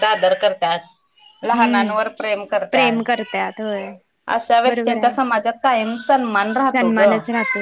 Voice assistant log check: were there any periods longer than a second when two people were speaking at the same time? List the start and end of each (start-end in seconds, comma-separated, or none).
none